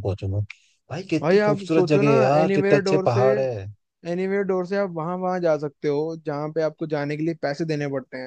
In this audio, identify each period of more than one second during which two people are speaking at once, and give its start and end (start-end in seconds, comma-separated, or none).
1.2-3.2